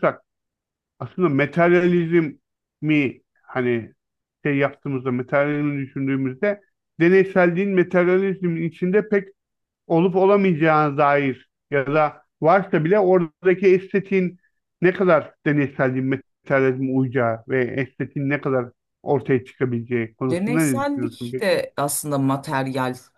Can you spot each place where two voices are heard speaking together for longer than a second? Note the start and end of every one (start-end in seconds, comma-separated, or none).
20.3-21.6